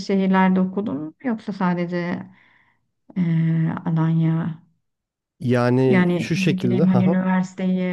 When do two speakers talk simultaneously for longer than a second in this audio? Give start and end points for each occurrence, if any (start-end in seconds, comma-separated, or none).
5.9-7.2